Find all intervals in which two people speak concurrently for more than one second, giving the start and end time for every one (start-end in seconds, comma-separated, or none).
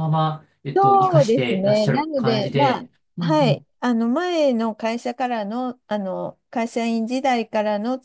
0.8-3.6